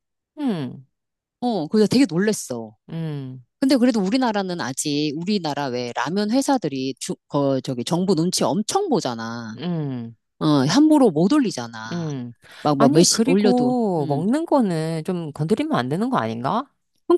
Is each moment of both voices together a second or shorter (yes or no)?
no